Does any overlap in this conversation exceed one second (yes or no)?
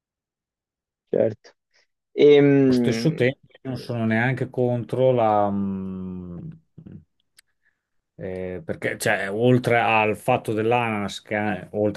no